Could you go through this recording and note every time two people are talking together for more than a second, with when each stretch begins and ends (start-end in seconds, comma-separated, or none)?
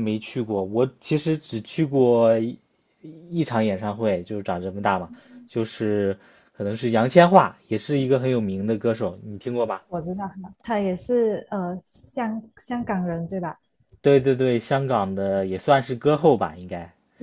none